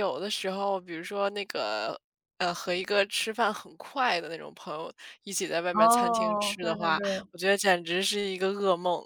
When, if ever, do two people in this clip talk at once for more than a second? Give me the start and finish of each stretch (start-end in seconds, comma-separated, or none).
5.7-7.3